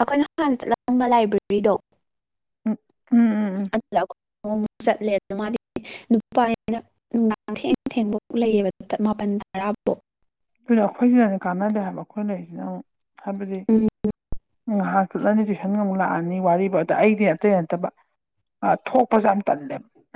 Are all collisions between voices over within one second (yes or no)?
yes